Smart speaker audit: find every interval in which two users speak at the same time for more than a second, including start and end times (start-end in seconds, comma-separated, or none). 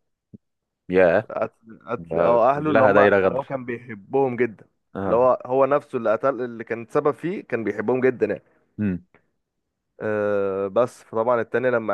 2.0-3.5